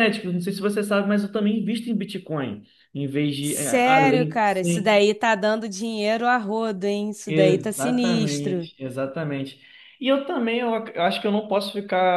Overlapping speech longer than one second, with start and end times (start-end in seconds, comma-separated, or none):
3.4-5.0, 7.3-8.7